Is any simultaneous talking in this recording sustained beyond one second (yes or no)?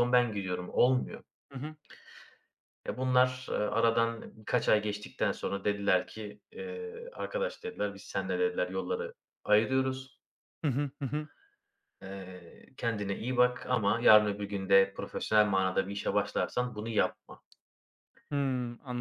no